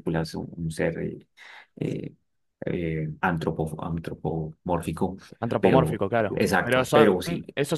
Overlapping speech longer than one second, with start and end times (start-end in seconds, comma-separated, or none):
5.6-7.1